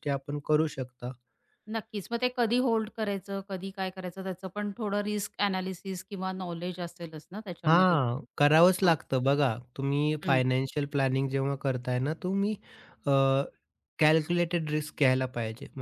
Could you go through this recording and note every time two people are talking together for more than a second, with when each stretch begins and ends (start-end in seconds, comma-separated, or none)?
none